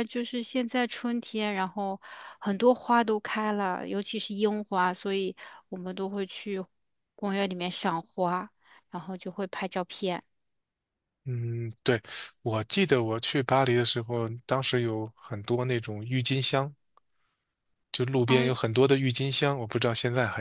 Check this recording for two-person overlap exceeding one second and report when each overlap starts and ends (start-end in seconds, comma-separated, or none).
none